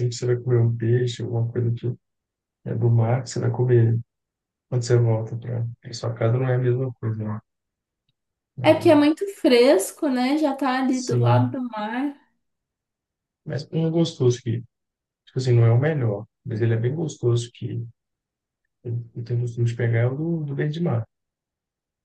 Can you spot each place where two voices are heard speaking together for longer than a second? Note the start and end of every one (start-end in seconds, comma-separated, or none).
none